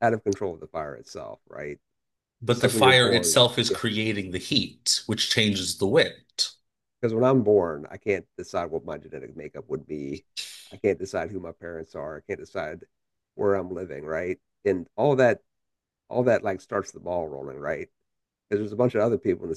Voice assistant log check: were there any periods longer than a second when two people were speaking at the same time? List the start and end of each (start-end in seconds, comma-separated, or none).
2.5-3.8